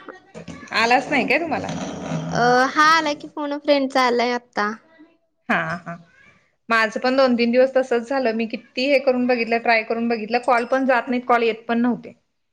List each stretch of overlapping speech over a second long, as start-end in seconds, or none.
none